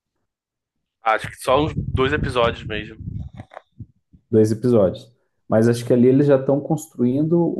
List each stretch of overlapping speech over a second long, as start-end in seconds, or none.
none